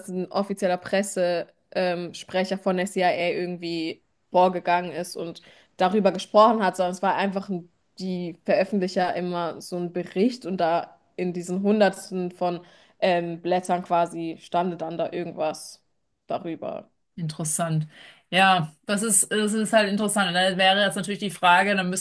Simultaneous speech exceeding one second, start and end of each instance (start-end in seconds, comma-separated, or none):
none